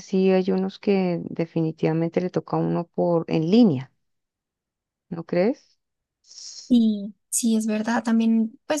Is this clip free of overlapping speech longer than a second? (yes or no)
yes